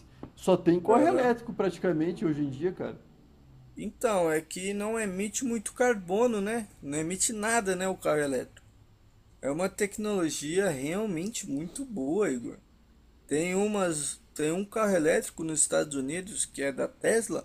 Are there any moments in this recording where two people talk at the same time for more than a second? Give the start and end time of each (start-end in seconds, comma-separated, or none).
none